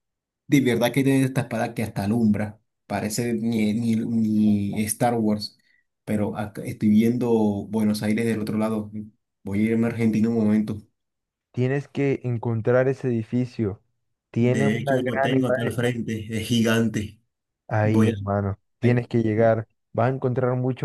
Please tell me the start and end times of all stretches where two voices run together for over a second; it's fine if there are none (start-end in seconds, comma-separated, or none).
14.4-15.8